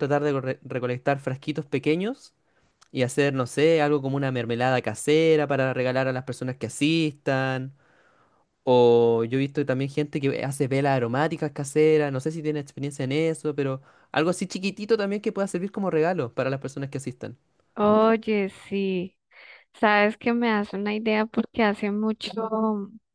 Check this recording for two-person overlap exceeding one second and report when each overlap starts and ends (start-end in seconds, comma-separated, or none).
none